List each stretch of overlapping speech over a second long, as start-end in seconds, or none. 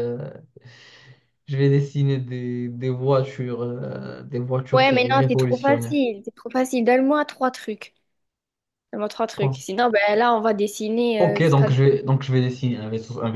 4.7-6.0